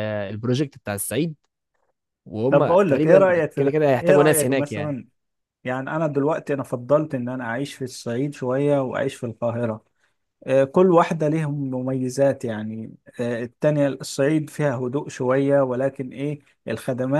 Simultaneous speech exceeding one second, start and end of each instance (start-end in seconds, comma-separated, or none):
2.5-4.9